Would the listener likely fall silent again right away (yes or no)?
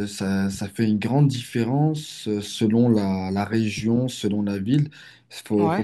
no